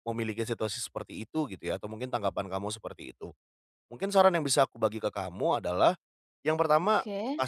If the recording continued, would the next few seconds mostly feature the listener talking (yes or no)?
no